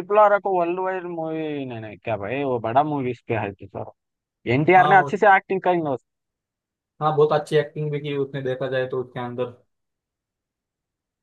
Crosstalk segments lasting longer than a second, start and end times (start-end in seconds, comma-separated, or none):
none